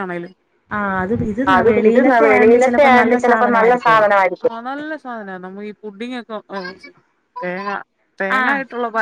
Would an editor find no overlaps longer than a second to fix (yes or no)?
no